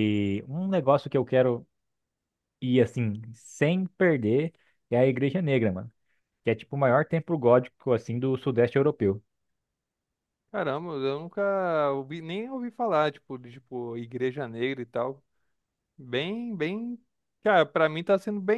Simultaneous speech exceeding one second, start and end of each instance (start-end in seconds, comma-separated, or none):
none